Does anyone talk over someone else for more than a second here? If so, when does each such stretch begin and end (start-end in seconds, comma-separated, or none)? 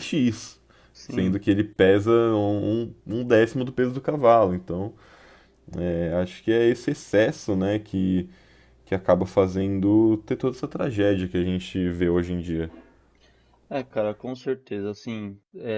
none